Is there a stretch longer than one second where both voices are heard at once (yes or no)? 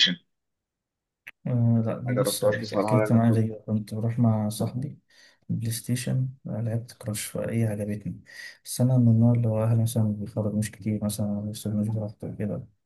yes